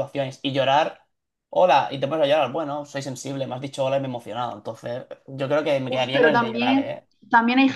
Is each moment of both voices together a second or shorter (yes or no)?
no